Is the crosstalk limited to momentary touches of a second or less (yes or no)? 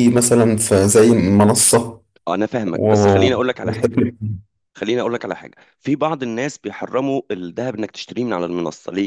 yes